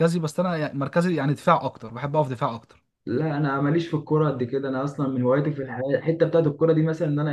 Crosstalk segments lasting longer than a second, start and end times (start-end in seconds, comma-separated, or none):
none